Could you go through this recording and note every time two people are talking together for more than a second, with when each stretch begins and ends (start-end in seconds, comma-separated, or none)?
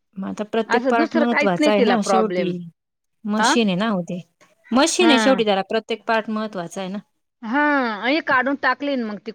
0.8-2.5